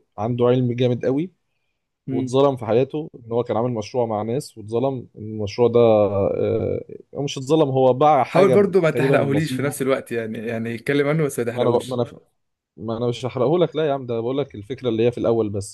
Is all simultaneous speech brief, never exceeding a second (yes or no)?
no